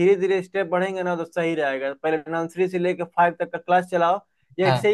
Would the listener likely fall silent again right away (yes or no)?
yes